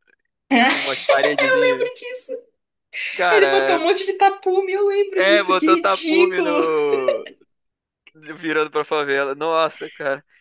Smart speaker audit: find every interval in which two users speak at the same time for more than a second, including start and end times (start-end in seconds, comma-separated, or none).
5.2-6.7